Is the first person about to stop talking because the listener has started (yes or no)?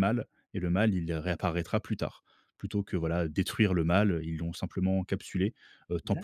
yes